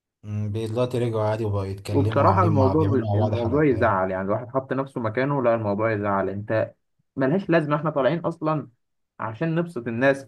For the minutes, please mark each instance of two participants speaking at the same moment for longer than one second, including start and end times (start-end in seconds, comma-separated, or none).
1.9-4.0